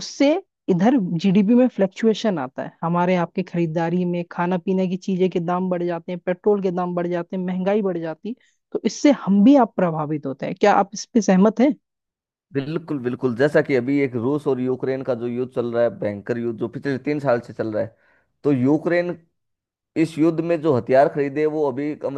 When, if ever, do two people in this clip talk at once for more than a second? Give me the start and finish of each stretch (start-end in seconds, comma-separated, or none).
none